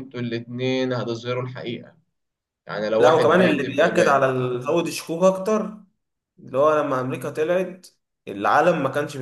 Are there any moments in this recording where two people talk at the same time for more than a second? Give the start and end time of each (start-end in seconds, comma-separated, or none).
3.0-4.3